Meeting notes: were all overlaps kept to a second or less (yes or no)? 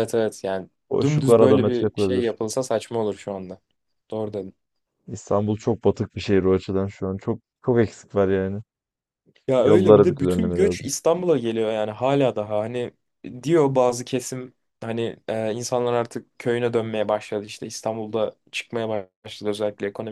no